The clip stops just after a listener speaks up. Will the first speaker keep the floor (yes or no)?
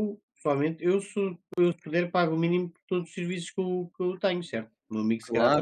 no